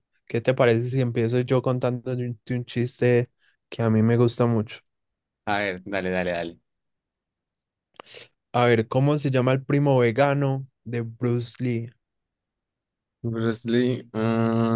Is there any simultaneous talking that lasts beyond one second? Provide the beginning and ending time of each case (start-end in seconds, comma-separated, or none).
none